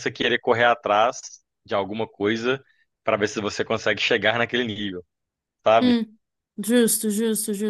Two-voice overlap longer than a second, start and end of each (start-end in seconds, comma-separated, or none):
none